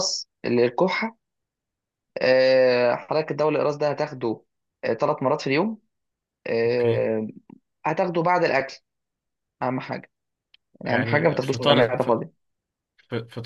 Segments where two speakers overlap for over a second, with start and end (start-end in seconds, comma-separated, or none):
10.8-12.2